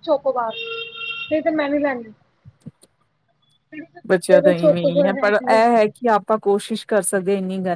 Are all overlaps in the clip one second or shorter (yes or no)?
no